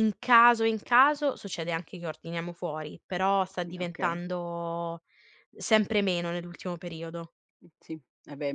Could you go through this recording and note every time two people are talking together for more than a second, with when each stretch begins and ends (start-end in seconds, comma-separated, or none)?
none